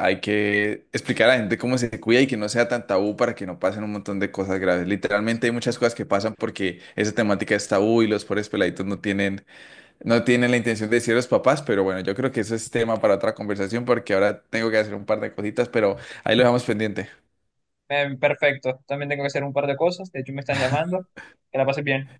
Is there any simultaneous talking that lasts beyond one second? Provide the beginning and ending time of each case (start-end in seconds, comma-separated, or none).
none